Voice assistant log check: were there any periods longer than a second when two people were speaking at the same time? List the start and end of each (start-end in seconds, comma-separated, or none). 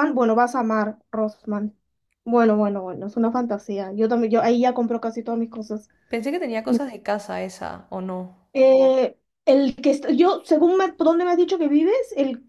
none